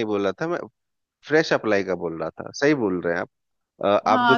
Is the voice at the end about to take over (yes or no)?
yes